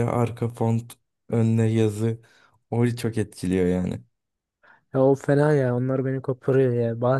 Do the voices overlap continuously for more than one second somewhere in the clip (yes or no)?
no